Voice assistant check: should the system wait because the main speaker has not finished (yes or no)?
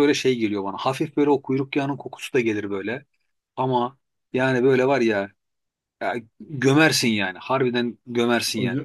no